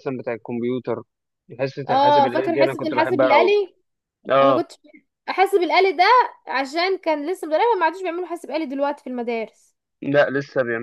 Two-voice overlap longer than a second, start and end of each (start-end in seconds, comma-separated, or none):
1.9-3.5